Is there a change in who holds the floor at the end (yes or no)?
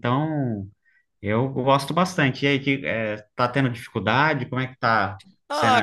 yes